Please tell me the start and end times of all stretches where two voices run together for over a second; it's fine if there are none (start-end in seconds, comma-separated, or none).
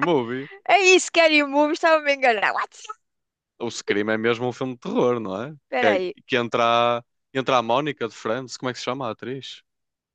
none